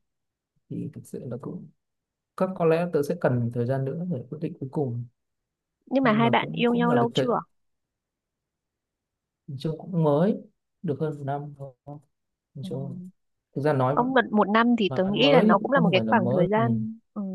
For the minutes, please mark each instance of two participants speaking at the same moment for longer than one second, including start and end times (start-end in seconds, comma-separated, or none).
6.0-7.3, 15.0-16.6